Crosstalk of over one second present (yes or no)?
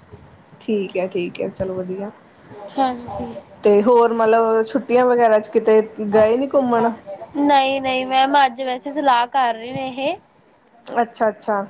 no